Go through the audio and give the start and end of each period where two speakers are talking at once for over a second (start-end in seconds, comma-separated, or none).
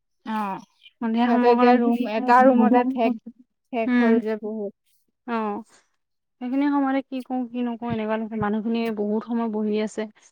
1.0-3.1